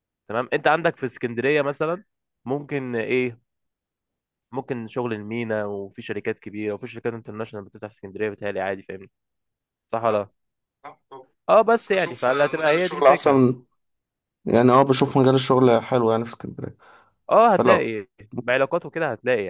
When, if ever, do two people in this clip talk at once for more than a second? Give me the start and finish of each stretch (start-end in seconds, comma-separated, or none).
11.7-13.4